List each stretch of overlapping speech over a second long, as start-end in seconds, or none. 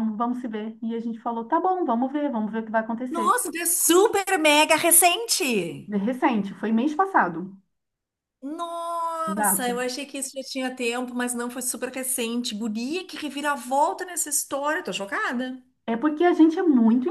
none